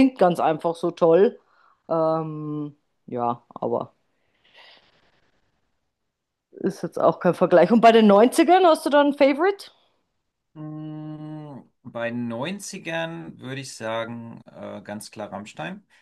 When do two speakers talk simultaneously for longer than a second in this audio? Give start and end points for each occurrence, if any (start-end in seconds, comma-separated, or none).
none